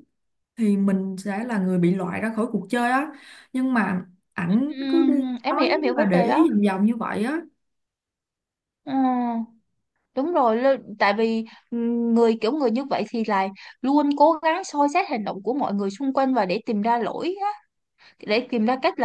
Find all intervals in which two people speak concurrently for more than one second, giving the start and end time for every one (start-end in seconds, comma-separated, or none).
4.5-6.5